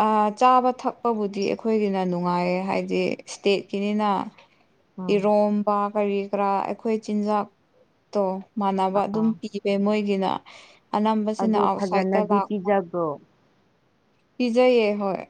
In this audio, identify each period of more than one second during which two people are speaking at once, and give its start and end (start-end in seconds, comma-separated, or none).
11.4-12.7